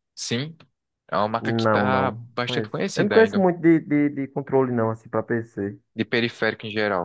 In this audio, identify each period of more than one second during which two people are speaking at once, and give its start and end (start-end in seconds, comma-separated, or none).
1.4-3.5